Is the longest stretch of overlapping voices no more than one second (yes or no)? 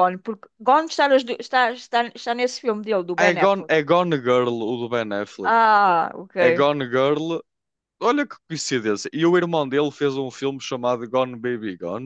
yes